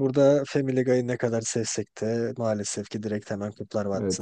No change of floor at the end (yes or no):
no